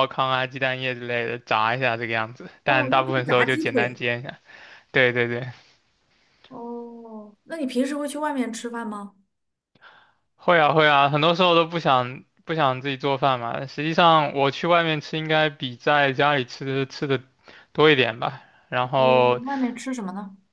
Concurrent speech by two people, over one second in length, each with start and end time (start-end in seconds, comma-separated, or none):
2.6-4.0